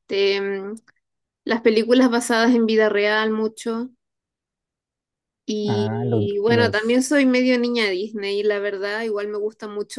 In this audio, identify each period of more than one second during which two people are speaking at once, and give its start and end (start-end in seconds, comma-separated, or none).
5.7-7.2